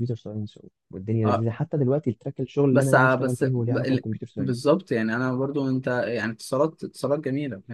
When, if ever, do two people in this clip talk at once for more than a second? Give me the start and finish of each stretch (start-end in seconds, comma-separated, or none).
2.7-4.7